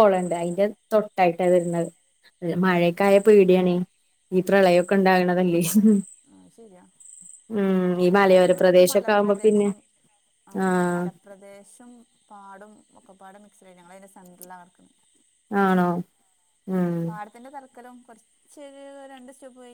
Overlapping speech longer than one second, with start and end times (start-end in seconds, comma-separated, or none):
8.2-9.7